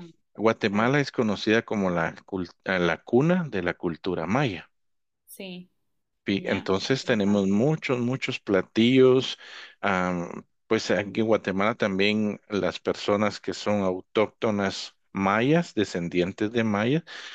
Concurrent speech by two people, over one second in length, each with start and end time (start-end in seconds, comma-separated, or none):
6.3-7.6